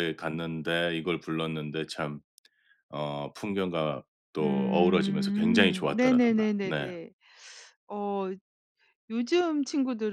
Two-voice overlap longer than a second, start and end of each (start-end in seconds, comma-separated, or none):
4.4-6.9